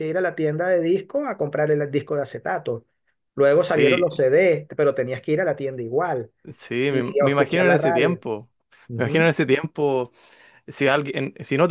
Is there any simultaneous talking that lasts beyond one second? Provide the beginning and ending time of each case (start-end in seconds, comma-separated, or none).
6.9-8.2